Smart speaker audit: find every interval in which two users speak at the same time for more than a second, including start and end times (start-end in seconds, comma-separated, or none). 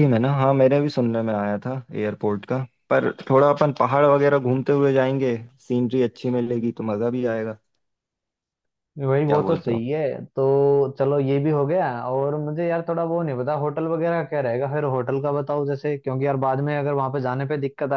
none